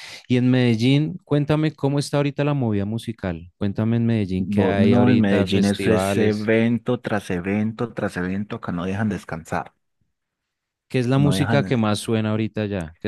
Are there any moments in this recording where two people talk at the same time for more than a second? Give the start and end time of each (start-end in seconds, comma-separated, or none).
4.4-6.5